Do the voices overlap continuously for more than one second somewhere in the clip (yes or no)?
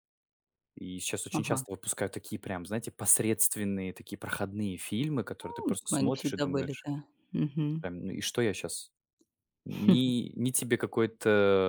yes